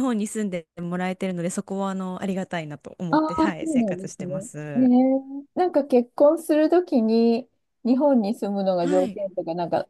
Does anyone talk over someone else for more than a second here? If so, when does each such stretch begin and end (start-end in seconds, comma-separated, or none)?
3.1-4.8